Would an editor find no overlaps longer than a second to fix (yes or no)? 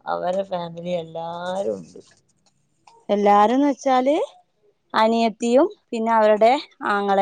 yes